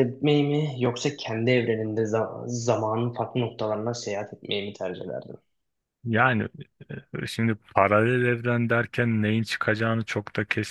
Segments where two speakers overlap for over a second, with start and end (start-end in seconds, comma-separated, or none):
none